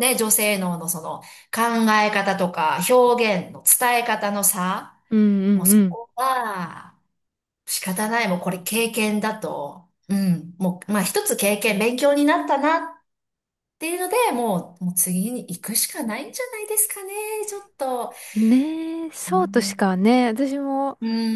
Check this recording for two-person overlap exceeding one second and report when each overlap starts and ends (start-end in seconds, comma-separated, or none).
none